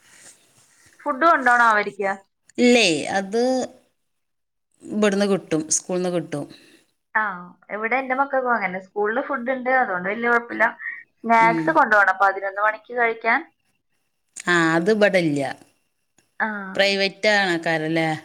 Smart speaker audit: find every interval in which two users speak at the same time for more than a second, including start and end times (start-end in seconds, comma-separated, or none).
none